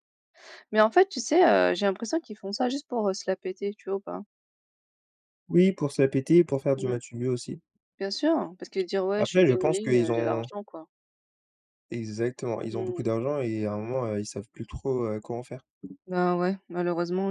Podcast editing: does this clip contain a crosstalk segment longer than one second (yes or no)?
yes